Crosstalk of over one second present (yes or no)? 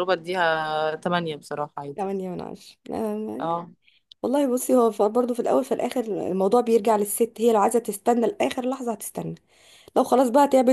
no